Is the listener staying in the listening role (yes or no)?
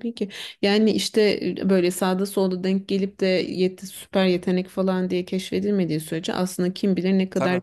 yes